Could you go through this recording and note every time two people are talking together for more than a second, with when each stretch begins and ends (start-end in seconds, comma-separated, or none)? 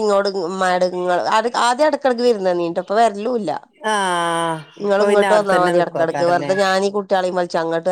4.9-6.5